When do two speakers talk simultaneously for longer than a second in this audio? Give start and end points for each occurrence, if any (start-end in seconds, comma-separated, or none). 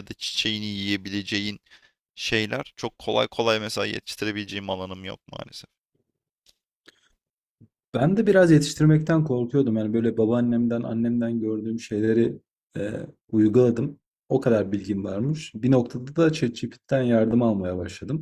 none